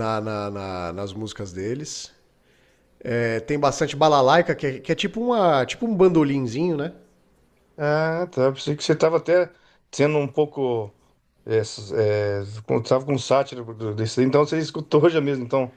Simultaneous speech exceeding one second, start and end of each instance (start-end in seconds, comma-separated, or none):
none